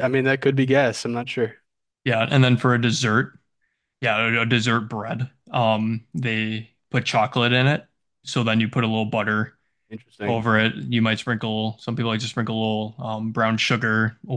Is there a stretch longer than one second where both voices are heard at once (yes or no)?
no